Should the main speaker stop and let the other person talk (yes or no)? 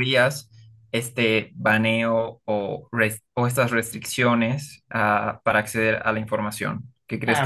yes